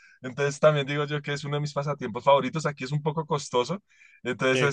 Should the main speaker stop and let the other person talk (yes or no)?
no